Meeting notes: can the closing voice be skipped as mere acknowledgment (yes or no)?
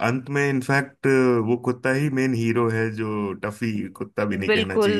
no